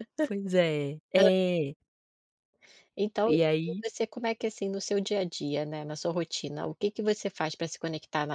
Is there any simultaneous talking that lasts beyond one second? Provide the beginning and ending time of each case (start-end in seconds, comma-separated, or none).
none